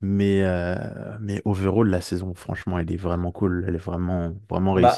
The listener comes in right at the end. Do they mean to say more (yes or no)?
yes